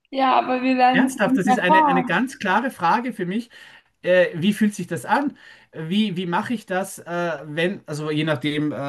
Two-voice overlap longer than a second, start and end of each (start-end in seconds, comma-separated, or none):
0.9-2.2